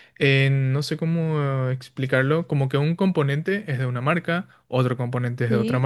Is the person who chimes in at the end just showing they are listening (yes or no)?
yes